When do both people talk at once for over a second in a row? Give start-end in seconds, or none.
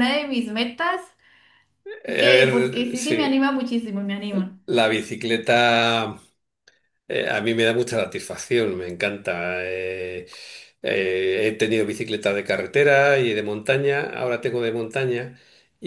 2.2-3.4